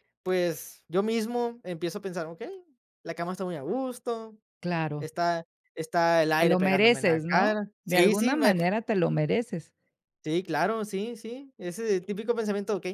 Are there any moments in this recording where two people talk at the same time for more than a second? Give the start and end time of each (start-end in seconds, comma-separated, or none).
6.3-8.3